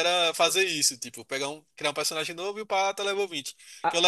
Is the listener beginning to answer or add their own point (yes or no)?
no